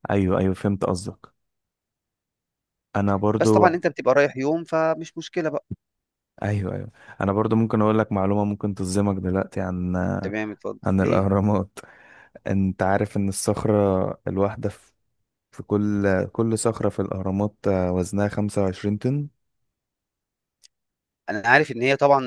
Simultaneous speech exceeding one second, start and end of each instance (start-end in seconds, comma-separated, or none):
none